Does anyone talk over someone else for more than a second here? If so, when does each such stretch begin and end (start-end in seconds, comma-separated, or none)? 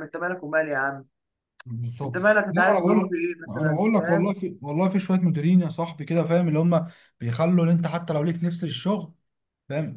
2.0-4.3